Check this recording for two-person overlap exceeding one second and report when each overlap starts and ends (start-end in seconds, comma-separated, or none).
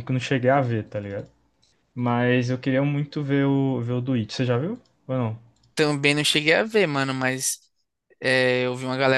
none